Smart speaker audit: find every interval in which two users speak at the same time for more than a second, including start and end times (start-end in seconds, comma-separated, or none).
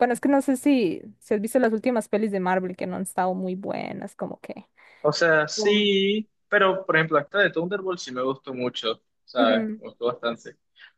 none